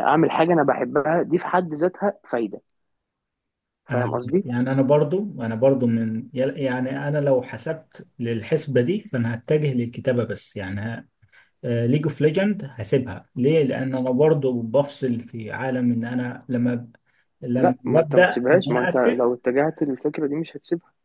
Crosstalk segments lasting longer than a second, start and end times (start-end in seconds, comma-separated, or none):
17.6-19.3